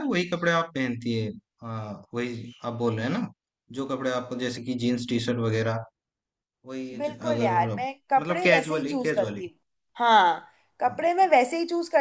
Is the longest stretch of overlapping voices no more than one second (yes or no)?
no